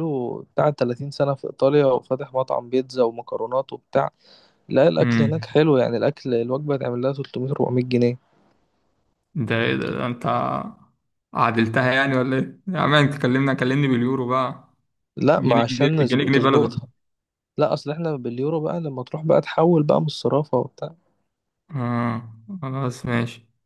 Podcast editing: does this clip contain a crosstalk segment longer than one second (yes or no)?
yes